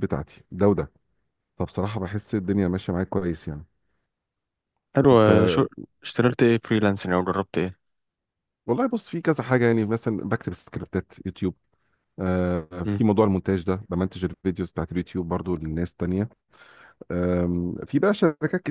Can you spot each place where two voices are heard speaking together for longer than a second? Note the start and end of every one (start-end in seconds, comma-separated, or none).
none